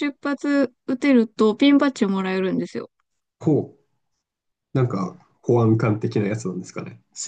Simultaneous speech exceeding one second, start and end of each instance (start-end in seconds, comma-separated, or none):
none